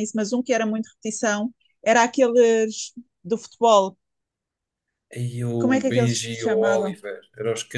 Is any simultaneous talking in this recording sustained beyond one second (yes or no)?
yes